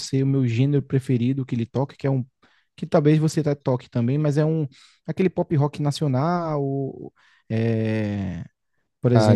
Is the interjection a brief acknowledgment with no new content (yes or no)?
no